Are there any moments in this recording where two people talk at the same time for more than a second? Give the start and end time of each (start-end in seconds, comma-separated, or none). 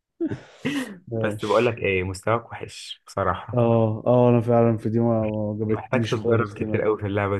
5.7-6.9